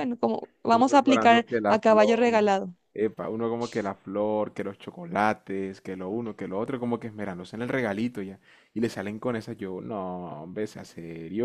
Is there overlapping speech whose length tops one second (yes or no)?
yes